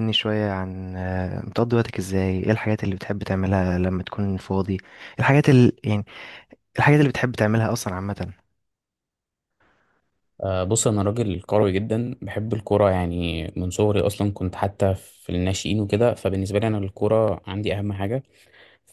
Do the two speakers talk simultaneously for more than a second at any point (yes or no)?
no